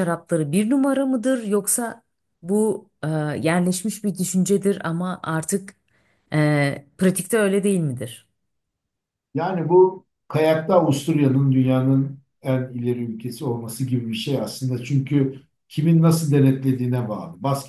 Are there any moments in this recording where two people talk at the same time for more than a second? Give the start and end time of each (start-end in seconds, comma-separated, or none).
none